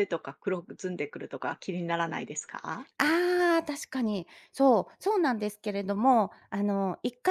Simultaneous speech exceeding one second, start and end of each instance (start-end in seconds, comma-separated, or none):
none